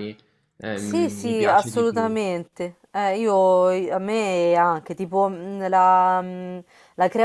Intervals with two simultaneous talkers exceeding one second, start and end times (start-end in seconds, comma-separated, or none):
0.7-2.1